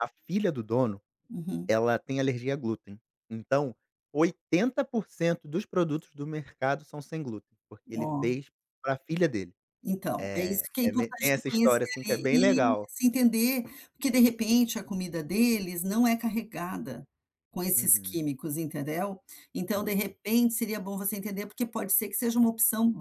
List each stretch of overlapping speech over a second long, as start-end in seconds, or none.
10.2-12.9